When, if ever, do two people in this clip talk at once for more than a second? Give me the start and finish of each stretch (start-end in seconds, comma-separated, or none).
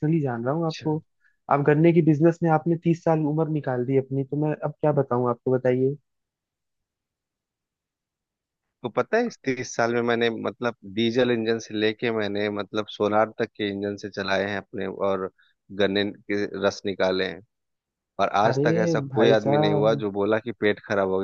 18.4-20.0